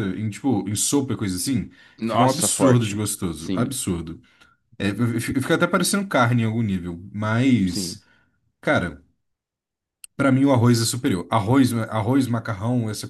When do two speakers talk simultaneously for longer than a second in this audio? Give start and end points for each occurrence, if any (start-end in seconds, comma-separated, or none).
2.0-3.8